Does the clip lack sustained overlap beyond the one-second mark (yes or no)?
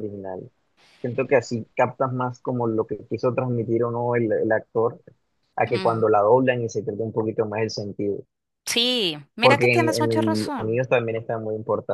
no